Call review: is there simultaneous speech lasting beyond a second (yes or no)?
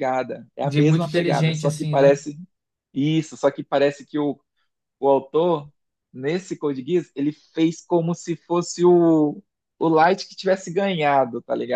yes